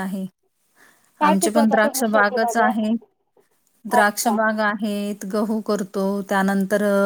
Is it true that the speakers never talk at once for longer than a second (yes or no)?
no